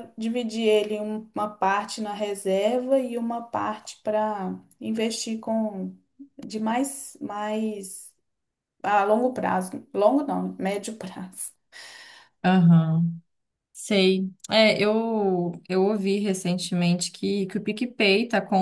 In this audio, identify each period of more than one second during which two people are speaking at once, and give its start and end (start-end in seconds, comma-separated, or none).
none